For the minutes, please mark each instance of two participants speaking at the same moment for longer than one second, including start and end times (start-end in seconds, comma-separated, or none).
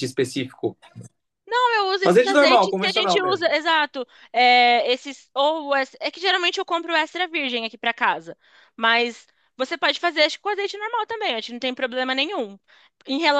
2.0-3.5